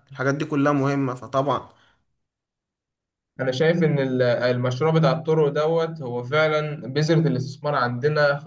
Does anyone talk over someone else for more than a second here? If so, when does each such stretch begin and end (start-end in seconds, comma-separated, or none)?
none